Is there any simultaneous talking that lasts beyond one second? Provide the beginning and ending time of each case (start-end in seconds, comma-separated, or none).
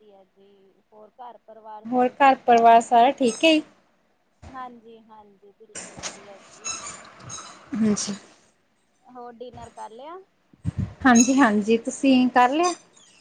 none